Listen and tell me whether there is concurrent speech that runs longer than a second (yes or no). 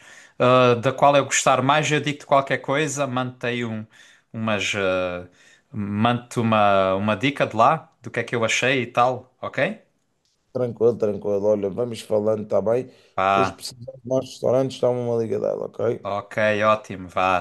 no